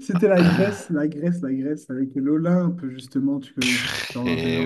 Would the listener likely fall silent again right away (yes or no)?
no